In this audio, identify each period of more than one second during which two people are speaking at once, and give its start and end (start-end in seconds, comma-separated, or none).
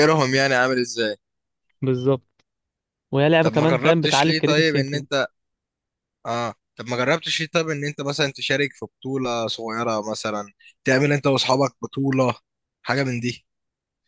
3.4-5.1